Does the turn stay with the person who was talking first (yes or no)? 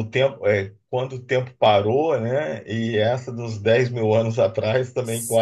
yes